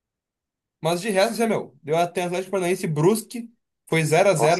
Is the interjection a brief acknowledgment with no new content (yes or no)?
yes